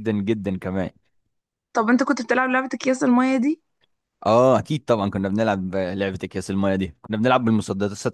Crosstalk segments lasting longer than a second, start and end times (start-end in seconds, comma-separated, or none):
none